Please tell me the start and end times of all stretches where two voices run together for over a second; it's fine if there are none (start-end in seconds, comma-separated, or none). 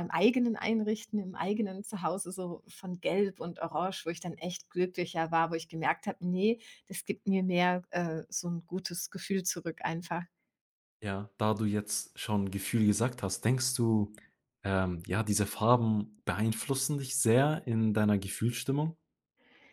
none